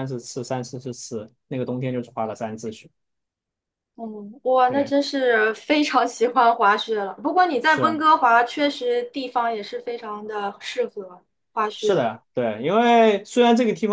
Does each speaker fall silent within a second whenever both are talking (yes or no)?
yes